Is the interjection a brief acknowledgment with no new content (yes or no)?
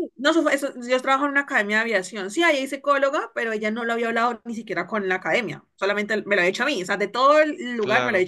yes